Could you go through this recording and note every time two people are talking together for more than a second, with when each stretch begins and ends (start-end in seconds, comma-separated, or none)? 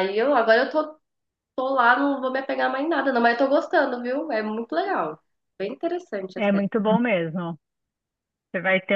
none